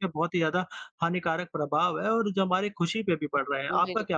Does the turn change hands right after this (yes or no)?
yes